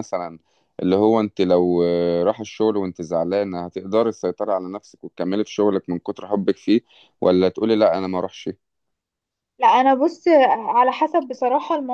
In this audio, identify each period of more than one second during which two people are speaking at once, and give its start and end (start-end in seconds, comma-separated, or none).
none